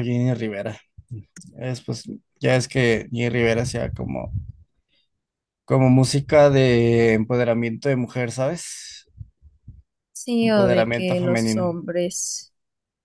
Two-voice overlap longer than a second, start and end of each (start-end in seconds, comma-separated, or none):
10.4-11.8